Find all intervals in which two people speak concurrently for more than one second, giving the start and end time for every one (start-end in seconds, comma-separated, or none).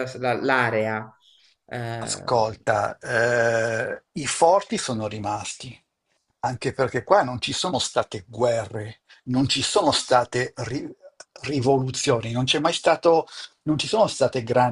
none